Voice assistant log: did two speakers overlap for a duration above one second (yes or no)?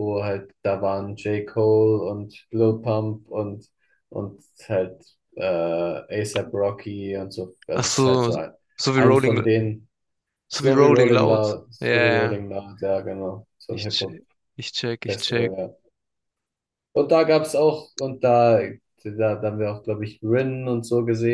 yes